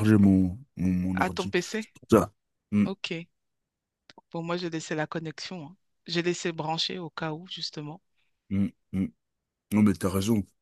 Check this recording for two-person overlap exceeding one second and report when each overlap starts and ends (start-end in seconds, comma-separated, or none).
none